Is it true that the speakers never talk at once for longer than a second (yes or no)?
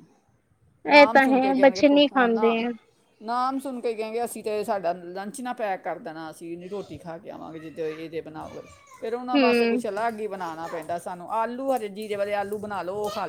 no